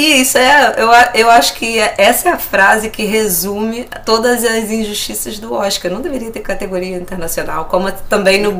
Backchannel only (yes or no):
yes